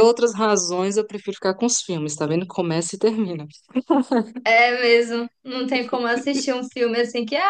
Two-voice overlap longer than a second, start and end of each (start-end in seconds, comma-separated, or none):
none